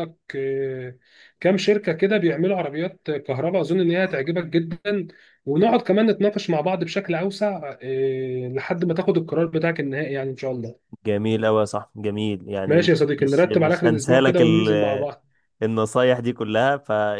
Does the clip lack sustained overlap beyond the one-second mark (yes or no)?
no